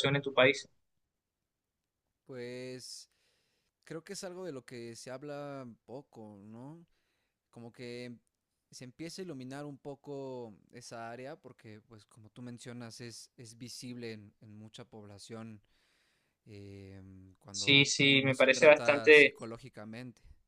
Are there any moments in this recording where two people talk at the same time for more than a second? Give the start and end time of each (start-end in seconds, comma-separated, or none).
17.5-19.4